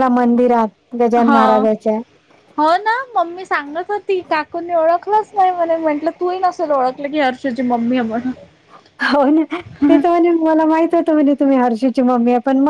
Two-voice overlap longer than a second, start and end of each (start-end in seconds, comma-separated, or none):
none